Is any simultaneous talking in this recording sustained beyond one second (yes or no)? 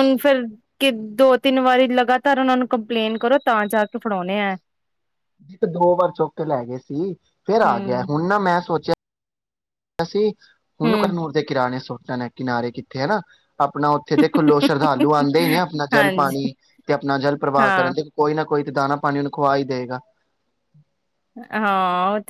no